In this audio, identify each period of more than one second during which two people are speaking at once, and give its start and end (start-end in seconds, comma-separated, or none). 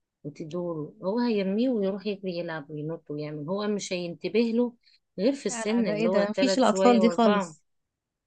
5.5-7.6